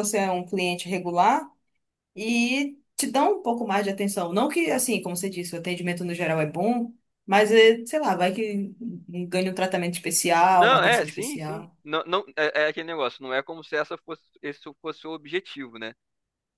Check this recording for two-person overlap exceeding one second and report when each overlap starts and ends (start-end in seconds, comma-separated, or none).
10.5-11.8